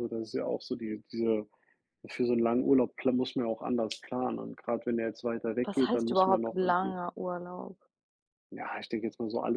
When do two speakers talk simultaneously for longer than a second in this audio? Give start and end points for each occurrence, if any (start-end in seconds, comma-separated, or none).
5.6-6.9